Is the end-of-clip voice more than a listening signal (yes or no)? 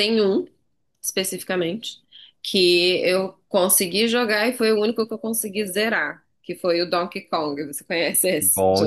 yes